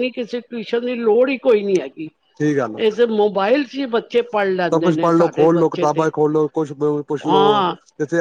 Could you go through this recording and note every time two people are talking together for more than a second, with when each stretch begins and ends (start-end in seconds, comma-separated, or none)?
4.7-6.1